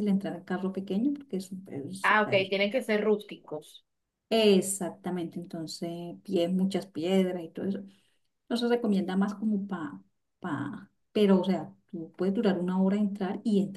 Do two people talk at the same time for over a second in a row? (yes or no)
no